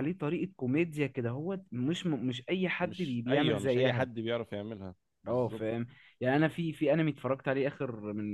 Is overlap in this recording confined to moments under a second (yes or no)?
no